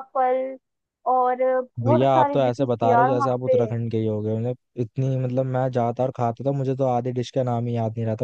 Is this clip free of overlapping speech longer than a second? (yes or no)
no